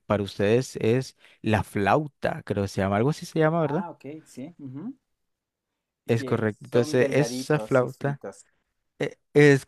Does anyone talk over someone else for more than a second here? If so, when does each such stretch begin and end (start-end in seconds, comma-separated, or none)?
6.2-8.2